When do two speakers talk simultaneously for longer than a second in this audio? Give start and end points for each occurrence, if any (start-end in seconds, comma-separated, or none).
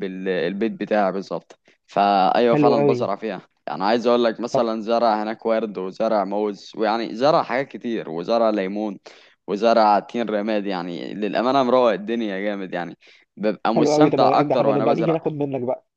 13.8-15.2